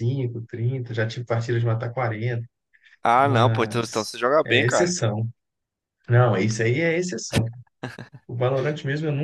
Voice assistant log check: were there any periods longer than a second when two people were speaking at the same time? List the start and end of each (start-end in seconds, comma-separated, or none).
3.2-4.9